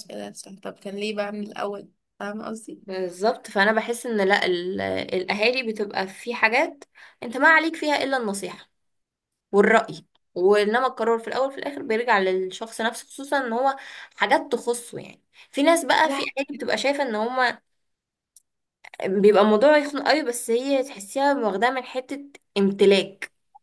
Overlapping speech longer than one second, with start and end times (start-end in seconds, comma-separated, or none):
none